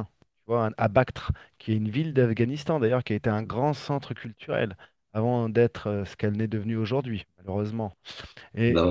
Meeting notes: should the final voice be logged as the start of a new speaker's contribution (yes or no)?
yes